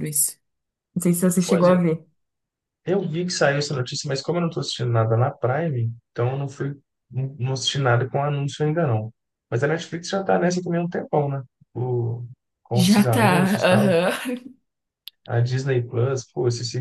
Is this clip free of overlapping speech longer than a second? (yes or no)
no